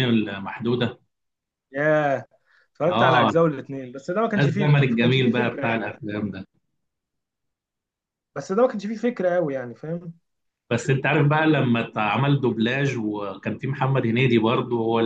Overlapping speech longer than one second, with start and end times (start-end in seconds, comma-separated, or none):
4.3-5.8